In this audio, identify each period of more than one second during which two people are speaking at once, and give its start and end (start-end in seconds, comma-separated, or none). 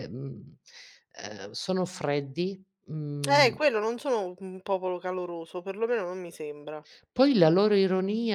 none